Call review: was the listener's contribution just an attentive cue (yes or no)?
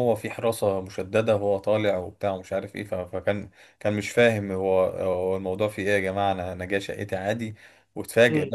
yes